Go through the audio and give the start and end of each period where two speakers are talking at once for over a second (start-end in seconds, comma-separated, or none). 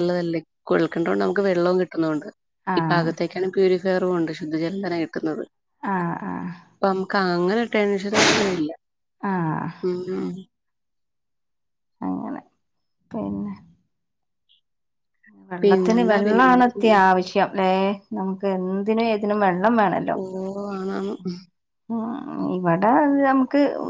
15.6-17.0